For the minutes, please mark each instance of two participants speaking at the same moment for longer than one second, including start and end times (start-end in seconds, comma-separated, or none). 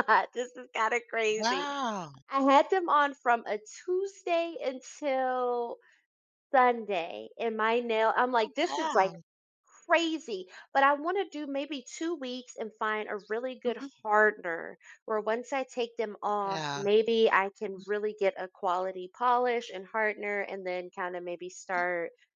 none